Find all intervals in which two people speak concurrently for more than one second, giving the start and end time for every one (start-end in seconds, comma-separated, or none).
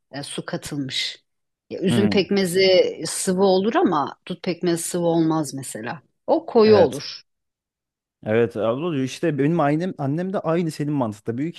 none